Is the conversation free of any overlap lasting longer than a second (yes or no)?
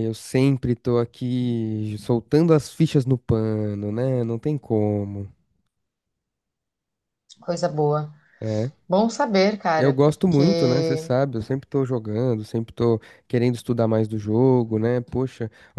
no